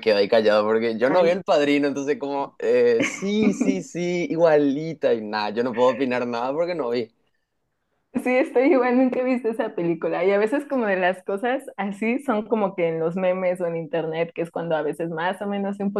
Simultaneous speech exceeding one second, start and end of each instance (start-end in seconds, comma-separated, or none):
none